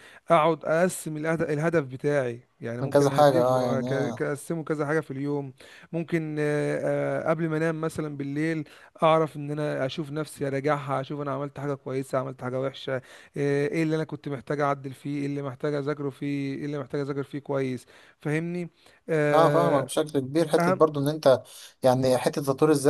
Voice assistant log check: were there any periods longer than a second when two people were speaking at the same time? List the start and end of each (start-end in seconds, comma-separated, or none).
2.8-4.2